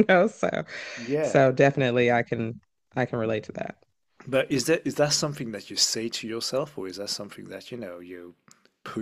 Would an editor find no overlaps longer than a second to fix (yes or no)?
yes